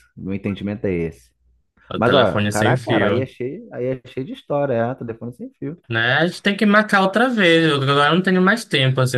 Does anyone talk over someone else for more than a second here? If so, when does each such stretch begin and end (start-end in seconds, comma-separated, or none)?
2.0-3.3